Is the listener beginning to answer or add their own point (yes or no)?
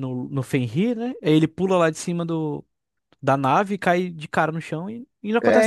yes